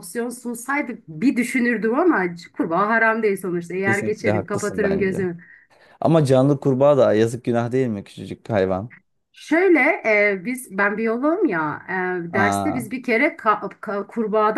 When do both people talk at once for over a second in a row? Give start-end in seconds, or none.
3.8-5.2